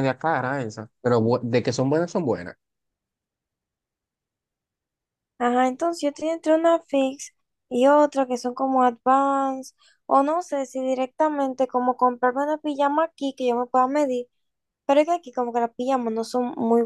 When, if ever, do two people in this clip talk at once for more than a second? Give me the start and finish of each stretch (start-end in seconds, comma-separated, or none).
none